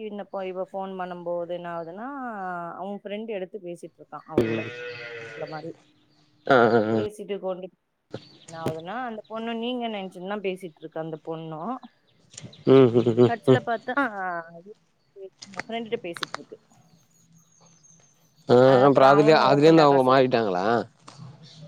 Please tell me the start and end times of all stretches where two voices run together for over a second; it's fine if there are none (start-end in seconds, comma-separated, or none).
18.7-20.2